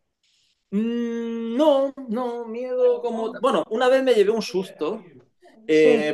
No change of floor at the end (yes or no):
yes